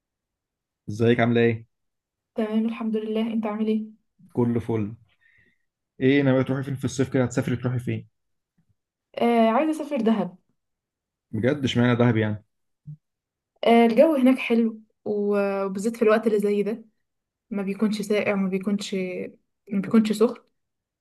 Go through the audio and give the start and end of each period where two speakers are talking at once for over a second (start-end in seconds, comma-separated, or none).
none